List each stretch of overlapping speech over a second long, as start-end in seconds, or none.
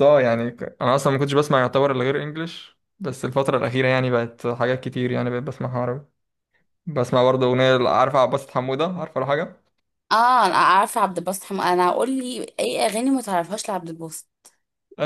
none